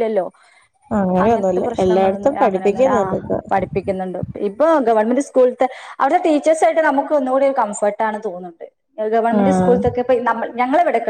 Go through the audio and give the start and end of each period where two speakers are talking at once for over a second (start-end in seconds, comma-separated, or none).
1.2-3.0